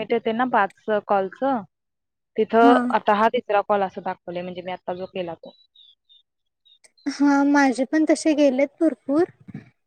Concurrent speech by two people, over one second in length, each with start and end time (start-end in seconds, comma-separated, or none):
none